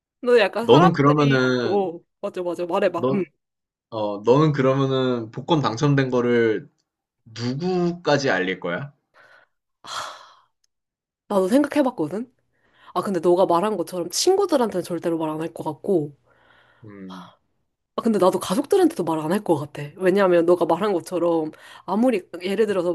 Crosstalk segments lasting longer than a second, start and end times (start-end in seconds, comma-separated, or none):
0.6-1.9